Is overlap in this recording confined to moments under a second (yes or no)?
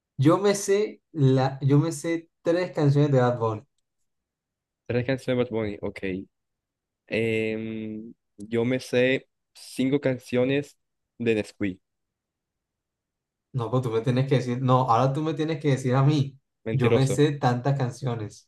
yes